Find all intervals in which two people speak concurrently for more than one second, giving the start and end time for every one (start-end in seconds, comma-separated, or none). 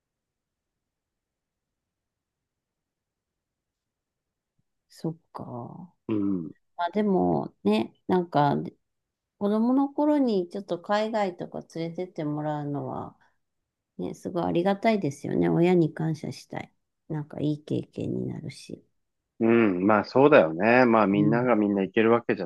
none